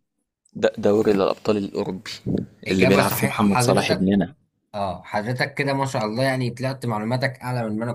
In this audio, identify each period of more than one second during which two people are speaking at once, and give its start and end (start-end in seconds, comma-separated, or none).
2.7-4.2